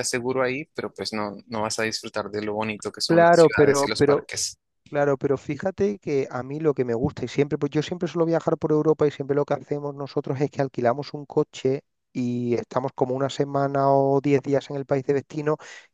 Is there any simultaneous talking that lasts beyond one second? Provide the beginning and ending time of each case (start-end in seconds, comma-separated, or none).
3.1-4.3